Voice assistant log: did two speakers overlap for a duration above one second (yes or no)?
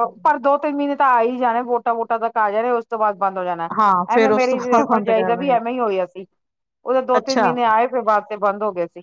yes